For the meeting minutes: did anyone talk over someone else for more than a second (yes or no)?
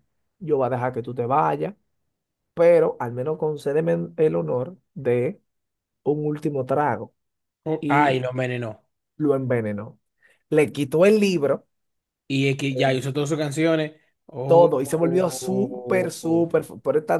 yes